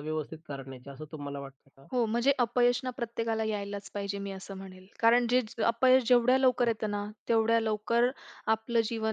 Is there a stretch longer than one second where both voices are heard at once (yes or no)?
no